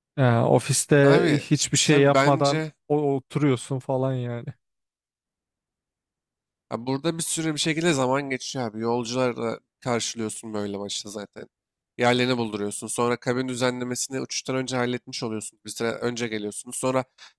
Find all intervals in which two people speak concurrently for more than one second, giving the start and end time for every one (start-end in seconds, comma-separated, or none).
1.0-2.7